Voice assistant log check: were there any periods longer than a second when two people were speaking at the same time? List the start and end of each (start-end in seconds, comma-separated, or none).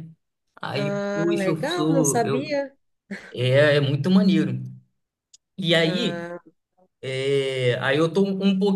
0.7-2.6